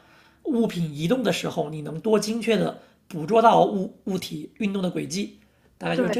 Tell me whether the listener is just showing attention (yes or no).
yes